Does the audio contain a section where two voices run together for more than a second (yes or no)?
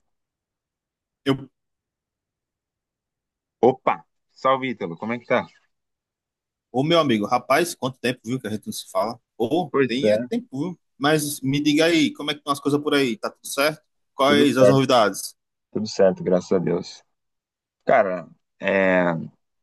no